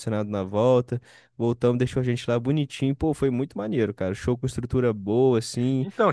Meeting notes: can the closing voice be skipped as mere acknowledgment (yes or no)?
no